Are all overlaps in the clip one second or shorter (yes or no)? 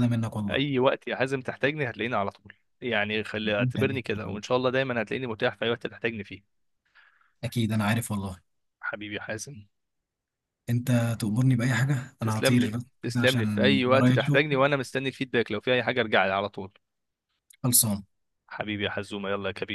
no